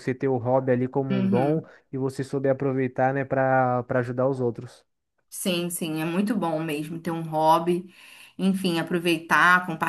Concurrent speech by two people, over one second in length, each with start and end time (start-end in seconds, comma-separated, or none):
none